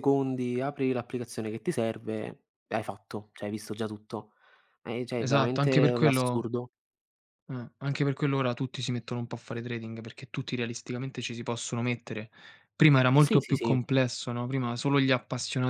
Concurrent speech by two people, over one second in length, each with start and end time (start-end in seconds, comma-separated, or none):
5.2-6.4